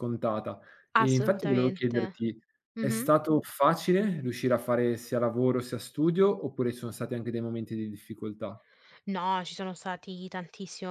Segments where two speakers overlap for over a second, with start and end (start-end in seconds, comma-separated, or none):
1.0-2.2